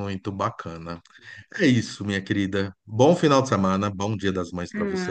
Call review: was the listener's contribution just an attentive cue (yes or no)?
no